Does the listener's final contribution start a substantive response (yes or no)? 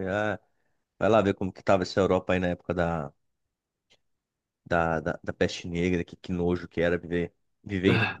no